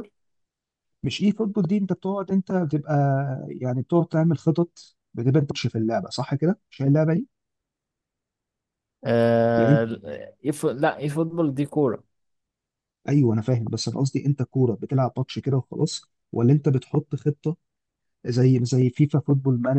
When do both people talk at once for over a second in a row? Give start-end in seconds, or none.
none